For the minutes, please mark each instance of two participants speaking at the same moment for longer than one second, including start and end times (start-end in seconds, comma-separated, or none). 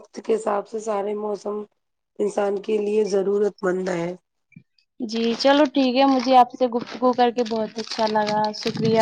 none